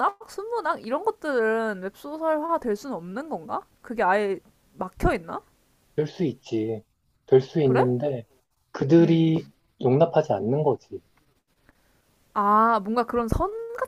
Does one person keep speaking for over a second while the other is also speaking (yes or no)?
no